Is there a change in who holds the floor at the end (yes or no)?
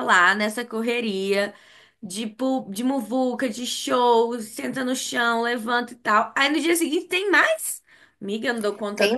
yes